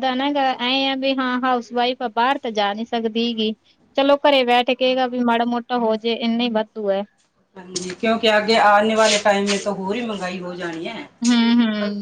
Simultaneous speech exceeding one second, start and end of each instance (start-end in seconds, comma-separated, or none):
none